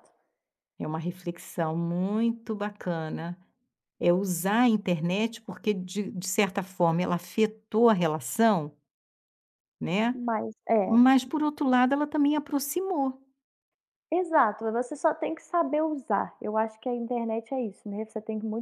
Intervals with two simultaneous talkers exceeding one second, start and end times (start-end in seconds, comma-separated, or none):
none